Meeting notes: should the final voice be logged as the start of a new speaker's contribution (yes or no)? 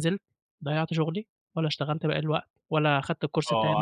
yes